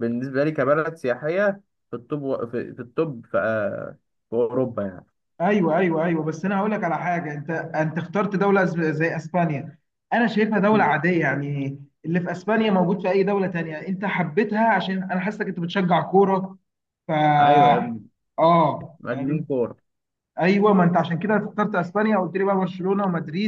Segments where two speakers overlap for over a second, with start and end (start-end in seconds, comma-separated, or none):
none